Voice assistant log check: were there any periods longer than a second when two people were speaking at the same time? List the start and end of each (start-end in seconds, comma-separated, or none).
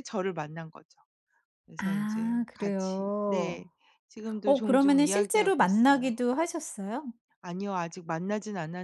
1.8-3.6, 4.4-6.1